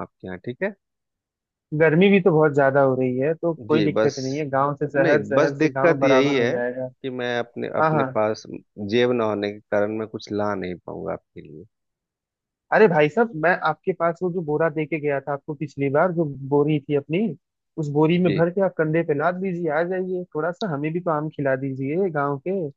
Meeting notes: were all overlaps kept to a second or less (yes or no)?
no